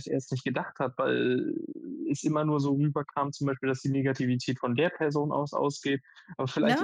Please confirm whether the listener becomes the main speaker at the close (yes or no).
no